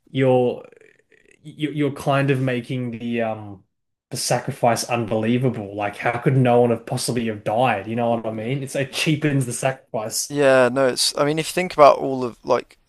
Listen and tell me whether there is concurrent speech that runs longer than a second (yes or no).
no